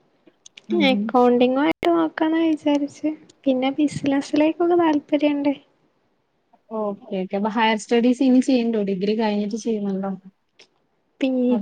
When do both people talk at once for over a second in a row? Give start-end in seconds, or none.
none